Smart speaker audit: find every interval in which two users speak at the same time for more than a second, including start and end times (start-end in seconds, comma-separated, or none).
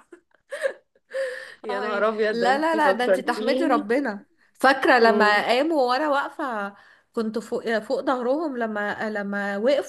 1.7-3.9